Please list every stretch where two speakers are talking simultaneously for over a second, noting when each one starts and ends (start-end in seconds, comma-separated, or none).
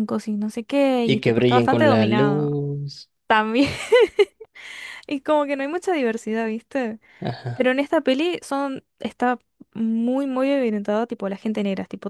1.0-2.5